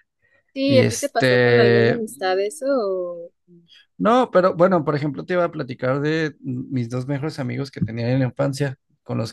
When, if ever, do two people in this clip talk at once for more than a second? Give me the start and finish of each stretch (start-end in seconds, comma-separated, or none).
0.7-2.0